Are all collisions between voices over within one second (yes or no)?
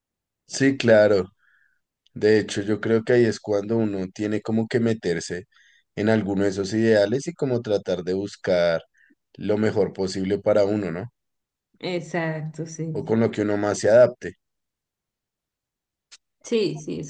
yes